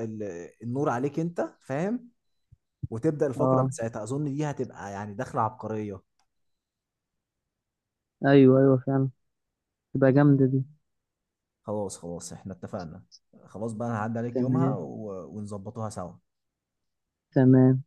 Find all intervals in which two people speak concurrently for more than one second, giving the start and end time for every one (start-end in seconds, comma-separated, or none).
none